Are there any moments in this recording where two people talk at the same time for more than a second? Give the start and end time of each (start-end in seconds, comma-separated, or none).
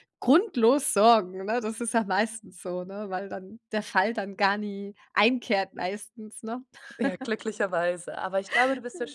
none